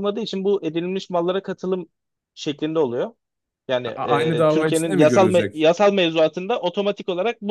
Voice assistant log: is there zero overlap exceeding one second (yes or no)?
no